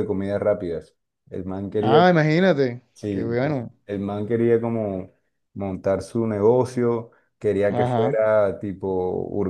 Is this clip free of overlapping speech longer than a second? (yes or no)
yes